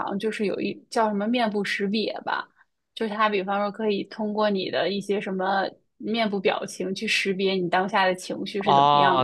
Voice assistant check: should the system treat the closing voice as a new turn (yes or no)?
yes